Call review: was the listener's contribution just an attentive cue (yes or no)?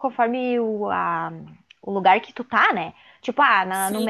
yes